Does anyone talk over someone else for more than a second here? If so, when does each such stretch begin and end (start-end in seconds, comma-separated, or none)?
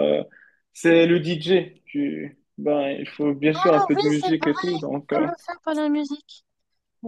3.6-5.3